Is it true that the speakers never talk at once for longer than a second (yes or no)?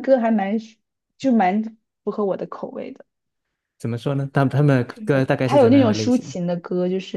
no